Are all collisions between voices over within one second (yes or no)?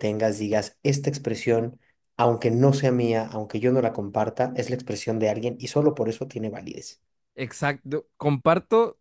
yes